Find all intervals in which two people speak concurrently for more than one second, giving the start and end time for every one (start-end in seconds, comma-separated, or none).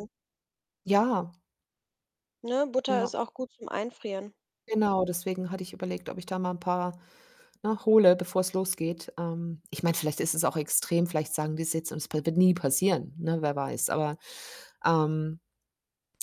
none